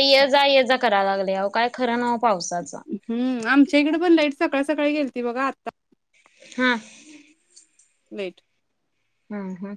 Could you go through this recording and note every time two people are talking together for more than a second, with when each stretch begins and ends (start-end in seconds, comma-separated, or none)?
none